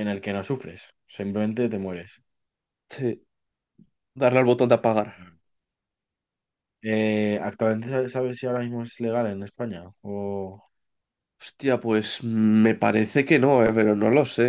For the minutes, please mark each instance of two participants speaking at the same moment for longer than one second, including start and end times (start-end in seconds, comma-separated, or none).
none